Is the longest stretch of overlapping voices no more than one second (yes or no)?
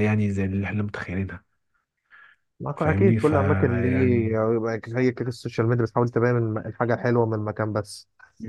no